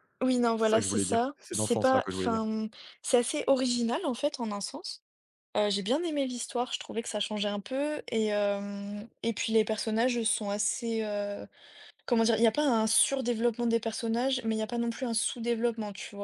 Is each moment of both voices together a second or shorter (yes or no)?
no